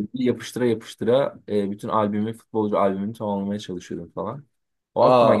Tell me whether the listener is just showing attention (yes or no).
no